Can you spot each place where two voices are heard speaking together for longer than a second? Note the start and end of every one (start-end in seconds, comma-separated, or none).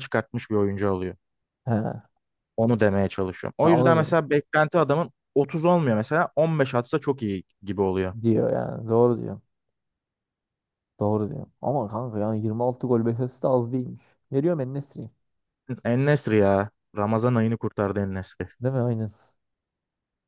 none